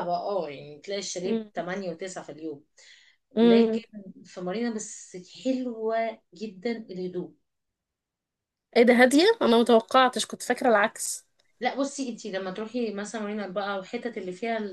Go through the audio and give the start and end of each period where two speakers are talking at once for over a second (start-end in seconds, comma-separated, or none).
none